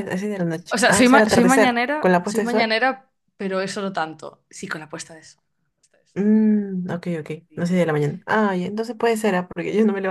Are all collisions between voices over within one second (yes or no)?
no